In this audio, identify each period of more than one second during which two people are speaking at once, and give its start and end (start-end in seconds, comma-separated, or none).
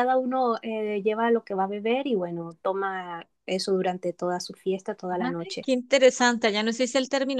none